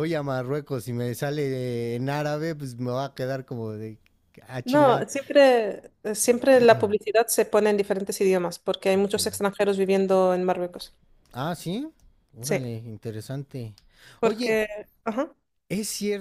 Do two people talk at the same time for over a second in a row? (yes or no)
no